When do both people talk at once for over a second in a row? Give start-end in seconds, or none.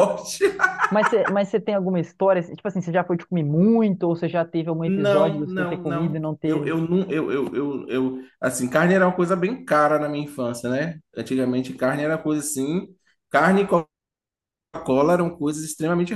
4.8-6.7